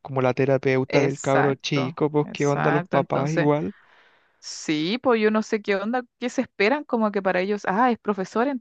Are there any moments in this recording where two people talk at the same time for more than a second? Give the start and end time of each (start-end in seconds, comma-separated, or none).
0.9-3.5